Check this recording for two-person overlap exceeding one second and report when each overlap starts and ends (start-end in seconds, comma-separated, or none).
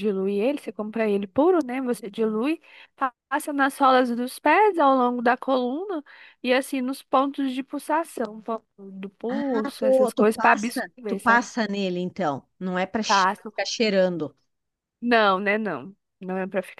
9.3-11.2